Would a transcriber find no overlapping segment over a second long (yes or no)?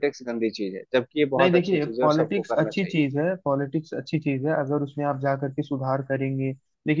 no